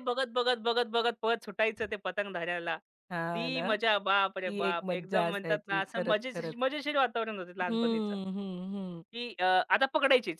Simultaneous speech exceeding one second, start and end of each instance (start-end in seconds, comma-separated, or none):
4.5-6.5